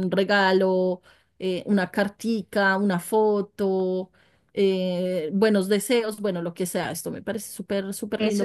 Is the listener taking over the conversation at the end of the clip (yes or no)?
yes